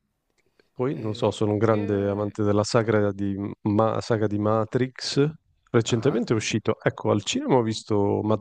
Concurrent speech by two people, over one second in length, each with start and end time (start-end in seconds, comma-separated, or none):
0.9-2.4